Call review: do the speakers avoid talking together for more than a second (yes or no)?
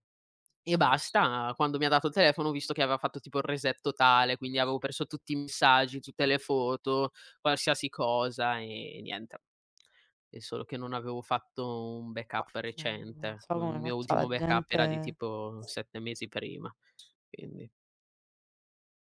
no